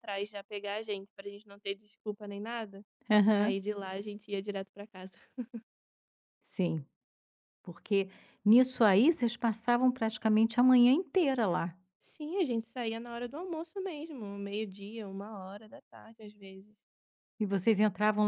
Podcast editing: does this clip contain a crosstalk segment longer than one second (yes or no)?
no